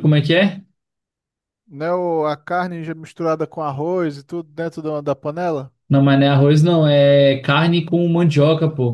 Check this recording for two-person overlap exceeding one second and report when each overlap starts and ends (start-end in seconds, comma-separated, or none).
none